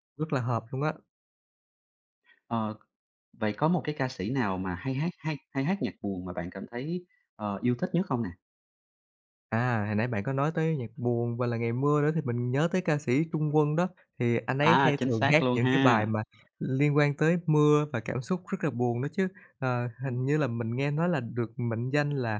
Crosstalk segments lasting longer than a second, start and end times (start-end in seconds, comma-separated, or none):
14.6-16.1